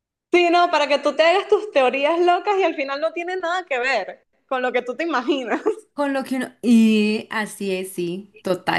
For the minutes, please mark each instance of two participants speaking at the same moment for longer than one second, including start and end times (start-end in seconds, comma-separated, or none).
none